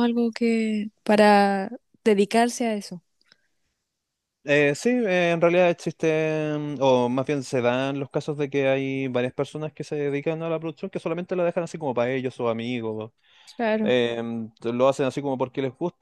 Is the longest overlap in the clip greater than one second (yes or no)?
no